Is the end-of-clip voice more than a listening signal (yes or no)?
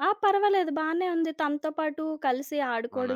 no